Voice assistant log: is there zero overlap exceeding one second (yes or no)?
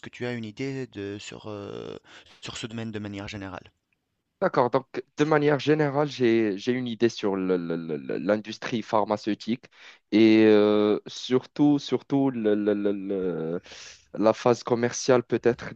yes